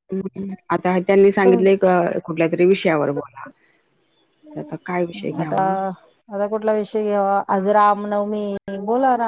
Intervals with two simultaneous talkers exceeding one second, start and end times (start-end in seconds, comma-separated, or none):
none